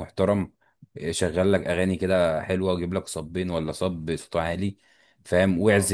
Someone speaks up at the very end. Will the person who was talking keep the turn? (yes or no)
yes